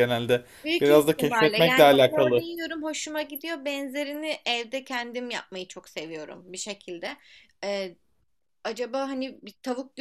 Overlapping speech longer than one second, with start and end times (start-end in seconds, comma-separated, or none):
0.6-2.4